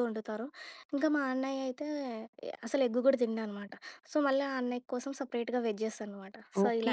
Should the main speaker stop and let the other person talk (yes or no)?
yes